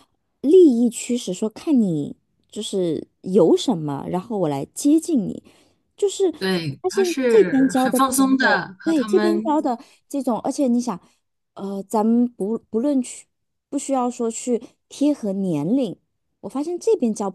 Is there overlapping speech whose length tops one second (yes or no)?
yes